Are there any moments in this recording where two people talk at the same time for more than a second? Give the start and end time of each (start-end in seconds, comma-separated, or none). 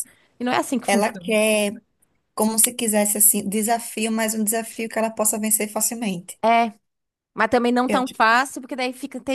none